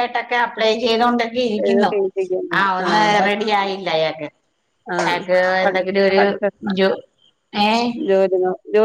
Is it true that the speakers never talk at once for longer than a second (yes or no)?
yes